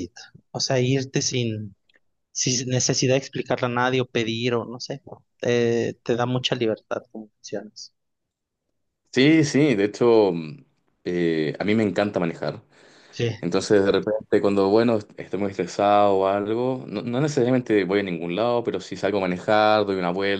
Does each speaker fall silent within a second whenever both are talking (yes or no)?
yes